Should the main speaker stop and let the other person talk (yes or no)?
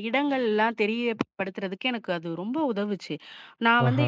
no